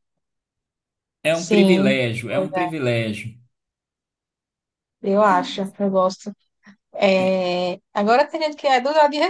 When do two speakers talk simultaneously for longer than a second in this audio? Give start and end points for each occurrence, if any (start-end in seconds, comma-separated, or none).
1.3-2.7